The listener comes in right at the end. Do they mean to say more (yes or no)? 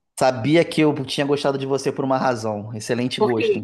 no